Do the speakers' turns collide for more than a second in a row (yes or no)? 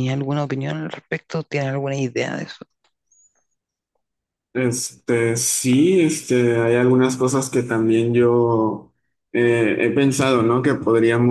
no